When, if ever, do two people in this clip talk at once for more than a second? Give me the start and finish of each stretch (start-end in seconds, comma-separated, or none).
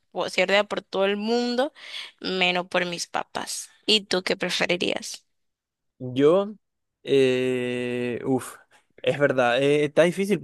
none